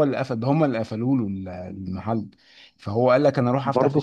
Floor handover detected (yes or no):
no